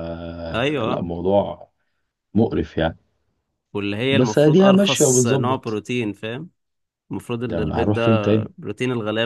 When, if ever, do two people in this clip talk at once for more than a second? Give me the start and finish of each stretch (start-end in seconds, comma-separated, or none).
4.1-5.8